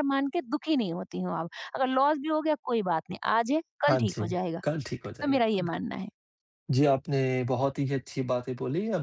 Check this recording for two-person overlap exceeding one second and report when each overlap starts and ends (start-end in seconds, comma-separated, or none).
none